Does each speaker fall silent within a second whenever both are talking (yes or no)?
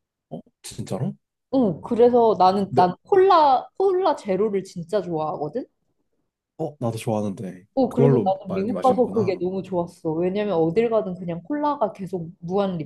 no